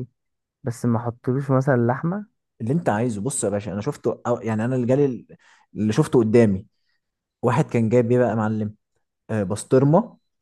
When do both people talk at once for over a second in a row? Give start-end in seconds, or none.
none